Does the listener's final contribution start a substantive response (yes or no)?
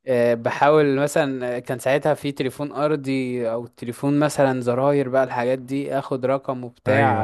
no